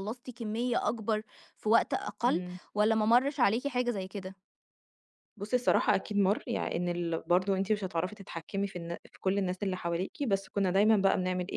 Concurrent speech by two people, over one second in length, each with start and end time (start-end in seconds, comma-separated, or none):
none